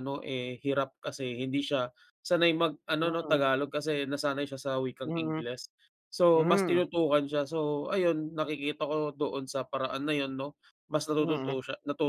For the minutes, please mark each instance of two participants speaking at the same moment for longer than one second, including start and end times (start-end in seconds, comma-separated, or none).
none